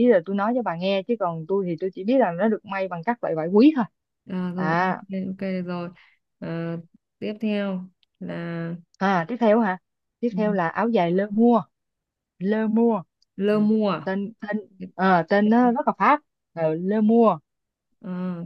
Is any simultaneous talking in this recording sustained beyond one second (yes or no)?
no